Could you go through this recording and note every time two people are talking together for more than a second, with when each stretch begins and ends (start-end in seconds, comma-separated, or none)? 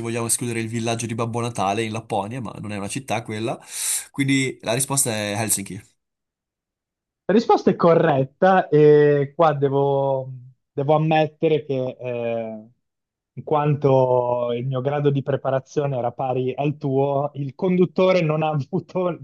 none